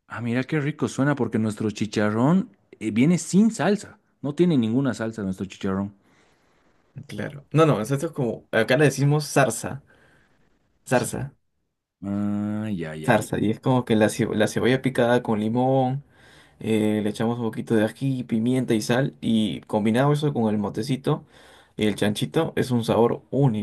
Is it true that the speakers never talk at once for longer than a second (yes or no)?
yes